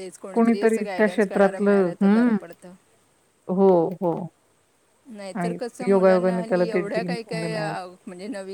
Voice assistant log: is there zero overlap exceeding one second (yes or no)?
no